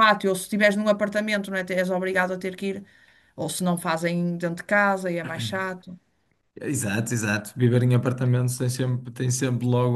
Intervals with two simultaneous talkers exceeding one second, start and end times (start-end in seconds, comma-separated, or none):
none